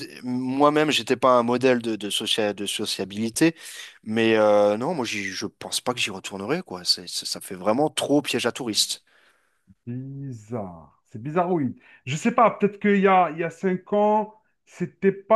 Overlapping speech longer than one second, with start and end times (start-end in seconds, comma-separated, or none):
none